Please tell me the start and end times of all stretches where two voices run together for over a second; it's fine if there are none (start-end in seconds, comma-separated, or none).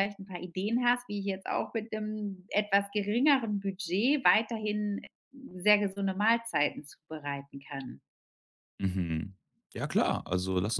none